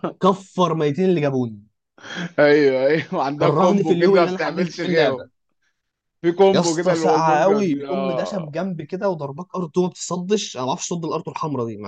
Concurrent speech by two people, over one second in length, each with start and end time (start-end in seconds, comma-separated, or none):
3.4-5.3, 6.5-8.6